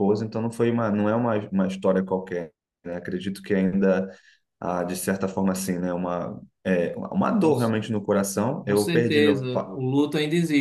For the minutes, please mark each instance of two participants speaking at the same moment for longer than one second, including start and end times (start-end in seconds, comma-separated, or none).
8.6-9.8